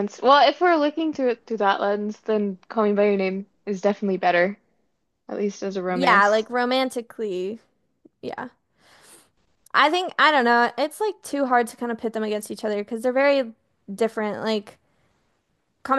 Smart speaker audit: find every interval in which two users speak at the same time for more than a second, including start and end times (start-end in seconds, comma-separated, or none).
none